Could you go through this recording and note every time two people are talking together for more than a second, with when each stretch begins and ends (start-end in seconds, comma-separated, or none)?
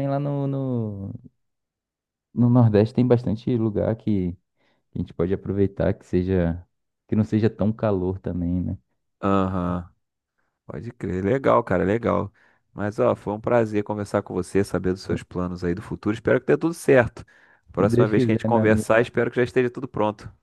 17.8-19.1